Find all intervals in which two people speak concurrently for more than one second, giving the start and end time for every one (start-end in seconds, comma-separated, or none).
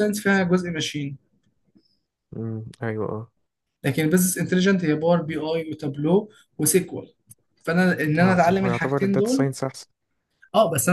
8.2-9.5